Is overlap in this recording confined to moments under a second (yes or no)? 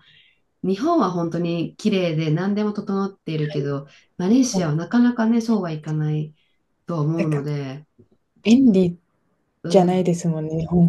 yes